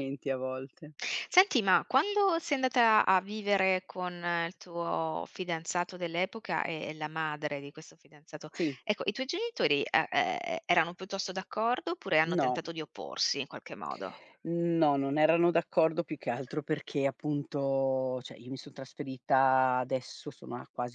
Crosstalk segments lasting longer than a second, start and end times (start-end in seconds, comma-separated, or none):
none